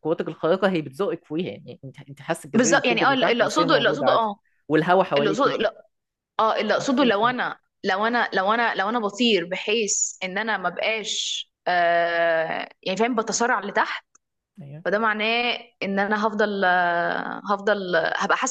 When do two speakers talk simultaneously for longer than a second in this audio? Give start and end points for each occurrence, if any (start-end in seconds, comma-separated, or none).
2.6-4.2